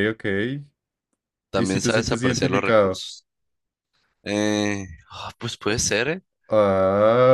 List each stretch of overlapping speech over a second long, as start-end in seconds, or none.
1.5-3.0